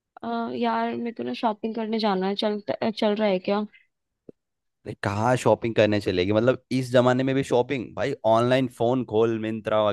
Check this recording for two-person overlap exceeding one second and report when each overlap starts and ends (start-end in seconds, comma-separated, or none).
none